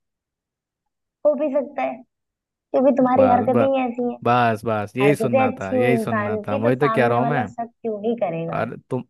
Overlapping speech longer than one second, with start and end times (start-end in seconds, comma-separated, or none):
5.0-7.5